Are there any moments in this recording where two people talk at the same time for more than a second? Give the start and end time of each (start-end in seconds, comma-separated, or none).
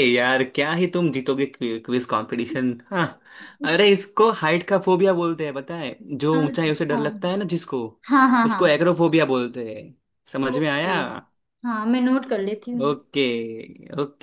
none